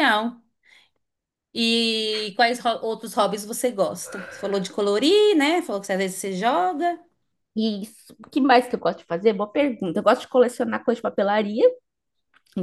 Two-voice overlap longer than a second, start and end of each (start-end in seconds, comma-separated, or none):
none